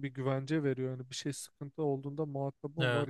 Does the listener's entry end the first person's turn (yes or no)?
yes